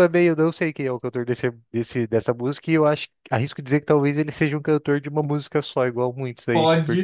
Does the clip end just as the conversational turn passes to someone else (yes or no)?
yes